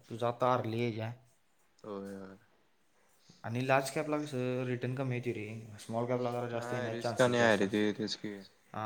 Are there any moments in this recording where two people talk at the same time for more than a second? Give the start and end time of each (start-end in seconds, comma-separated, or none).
6.5-8.3